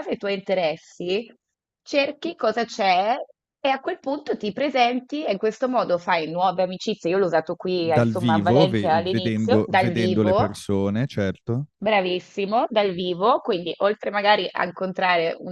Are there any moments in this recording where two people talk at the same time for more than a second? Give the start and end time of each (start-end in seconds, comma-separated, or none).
7.8-10.5